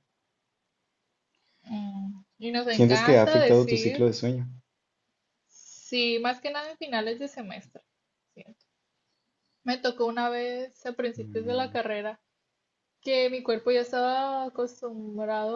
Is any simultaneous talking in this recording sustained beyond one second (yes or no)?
yes